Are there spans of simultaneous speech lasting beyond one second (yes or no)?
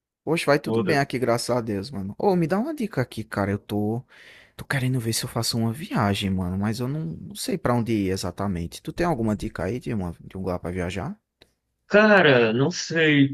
no